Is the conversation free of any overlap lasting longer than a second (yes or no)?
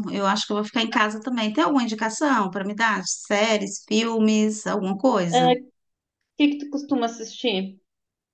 yes